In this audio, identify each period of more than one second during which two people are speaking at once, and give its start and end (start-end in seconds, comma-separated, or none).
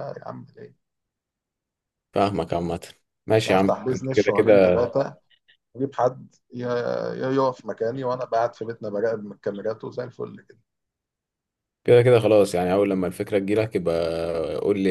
3.5-4.8